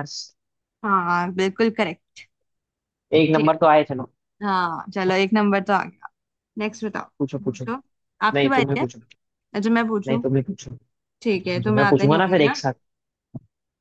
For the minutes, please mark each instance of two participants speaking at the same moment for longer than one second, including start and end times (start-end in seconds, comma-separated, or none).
11.2-12.6